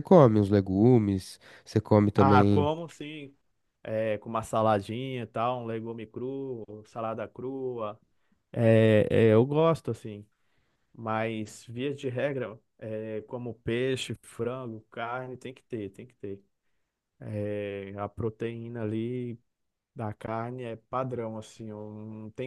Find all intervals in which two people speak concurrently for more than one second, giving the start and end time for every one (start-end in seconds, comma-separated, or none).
none